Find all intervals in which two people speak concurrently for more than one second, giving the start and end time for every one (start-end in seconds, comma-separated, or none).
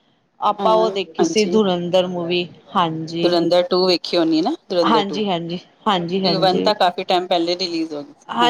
4.9-6.7